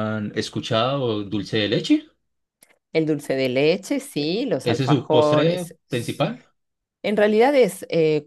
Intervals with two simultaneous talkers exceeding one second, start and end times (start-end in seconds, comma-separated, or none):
4.2-5.8